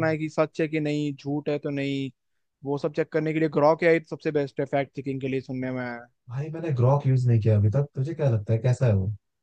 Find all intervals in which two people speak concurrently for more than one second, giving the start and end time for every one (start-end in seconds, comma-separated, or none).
none